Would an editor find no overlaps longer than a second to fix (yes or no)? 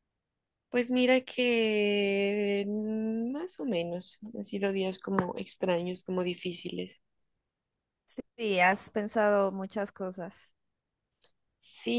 yes